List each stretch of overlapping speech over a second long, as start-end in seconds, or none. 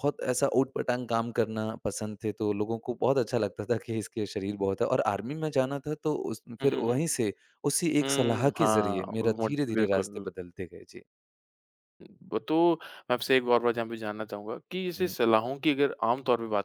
8.0-10.3